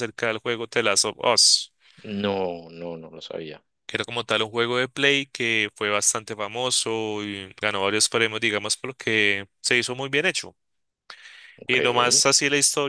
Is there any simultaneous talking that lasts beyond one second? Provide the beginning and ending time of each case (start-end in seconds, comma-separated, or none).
none